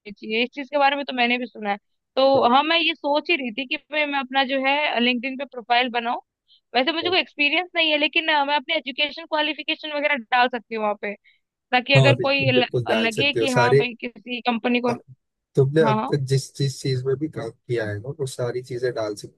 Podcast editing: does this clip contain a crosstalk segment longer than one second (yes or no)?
yes